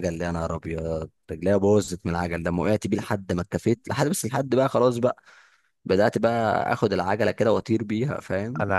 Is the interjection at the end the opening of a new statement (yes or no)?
yes